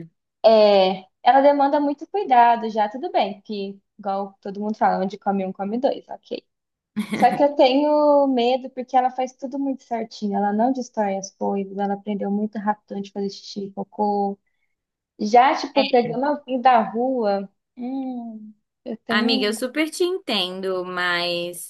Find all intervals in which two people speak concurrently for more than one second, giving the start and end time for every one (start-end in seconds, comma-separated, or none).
none